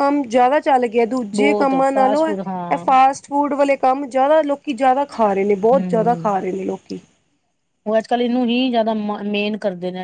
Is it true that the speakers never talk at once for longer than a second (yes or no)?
no